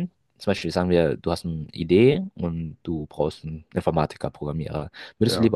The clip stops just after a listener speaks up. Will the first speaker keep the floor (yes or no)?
yes